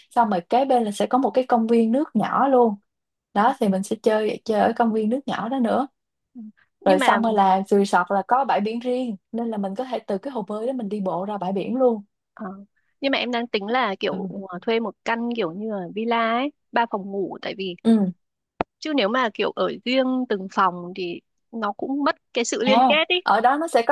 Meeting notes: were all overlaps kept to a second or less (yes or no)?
yes